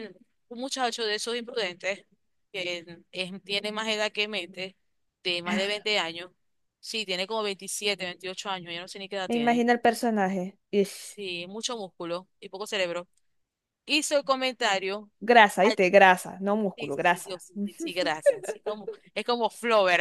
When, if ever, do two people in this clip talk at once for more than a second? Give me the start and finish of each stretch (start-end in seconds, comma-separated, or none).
16.8-18.0